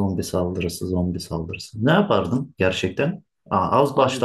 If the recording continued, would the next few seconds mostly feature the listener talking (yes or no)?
no